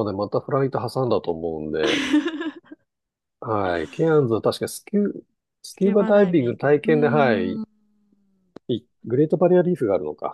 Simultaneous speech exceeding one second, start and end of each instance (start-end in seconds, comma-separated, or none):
5.7-7.6